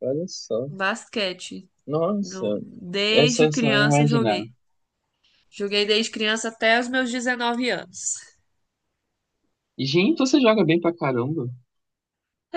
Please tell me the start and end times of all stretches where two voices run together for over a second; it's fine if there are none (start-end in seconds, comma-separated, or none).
3.1-4.4